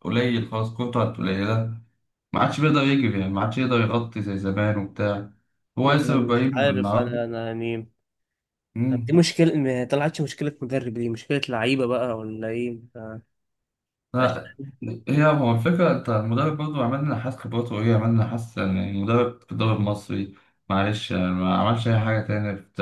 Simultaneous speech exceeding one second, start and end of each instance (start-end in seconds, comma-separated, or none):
5.9-7.2